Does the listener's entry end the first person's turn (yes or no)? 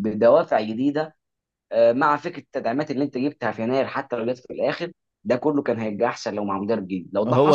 yes